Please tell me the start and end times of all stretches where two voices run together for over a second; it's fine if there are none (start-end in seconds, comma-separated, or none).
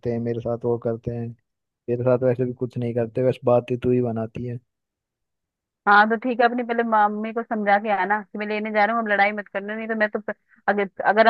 none